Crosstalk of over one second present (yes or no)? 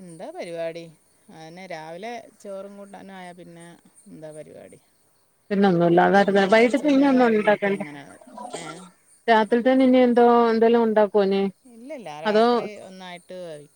yes